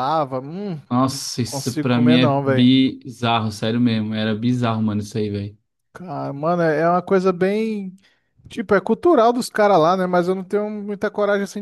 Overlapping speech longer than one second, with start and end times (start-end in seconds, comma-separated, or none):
0.9-2.7